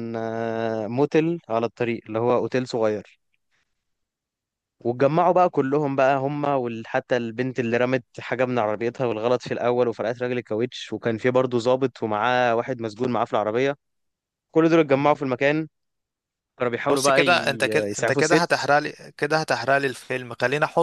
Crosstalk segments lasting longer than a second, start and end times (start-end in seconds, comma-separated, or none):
16.9-18.6